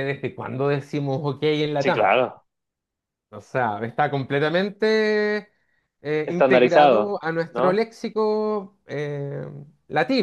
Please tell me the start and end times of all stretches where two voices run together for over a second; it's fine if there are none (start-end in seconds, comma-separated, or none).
6.2-7.8